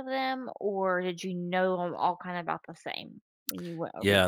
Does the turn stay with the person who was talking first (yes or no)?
no